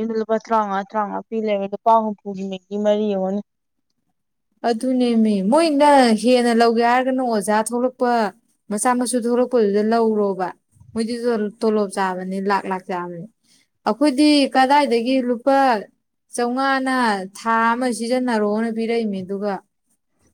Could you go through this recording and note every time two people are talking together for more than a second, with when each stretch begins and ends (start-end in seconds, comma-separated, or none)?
none